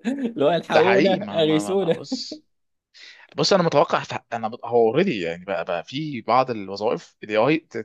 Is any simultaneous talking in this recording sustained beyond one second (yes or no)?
yes